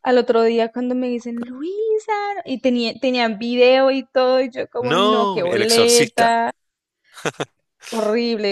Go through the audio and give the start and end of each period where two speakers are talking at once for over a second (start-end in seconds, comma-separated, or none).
4.8-6.3